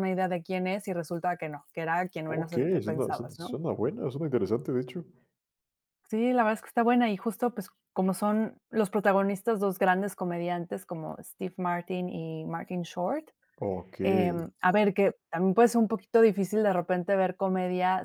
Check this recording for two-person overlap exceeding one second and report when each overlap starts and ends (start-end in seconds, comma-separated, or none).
2.2-3.6